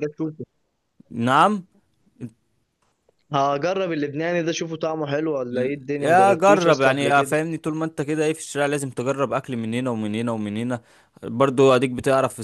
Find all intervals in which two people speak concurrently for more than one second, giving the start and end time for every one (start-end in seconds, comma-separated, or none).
5.5-7.3